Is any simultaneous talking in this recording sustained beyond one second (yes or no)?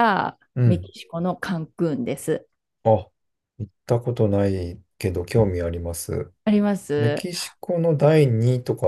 no